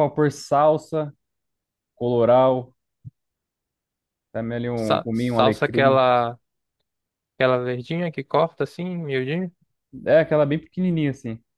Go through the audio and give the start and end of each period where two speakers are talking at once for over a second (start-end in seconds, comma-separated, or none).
4.7-6.0